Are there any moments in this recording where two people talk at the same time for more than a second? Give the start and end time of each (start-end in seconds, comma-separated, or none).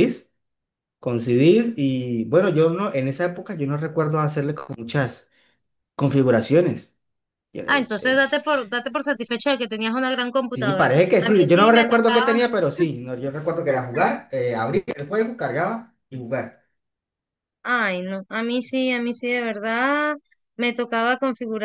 10.5-12.3